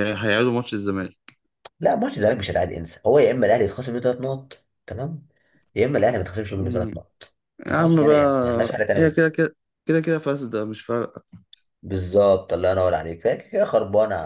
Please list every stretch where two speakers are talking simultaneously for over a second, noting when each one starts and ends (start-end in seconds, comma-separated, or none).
7.7-9.4